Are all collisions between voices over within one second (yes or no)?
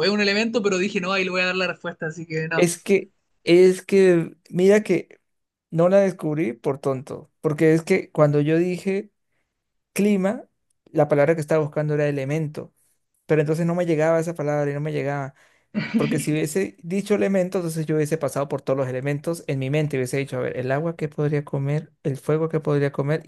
yes